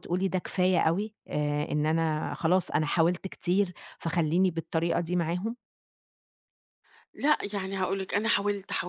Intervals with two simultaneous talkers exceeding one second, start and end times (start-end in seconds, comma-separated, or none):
none